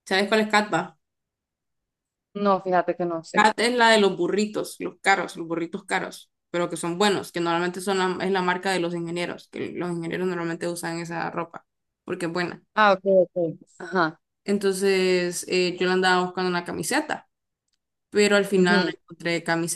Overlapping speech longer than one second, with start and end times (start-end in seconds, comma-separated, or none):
none